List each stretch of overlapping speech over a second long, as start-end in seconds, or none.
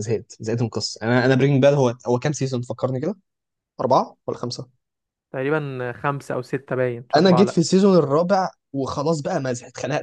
none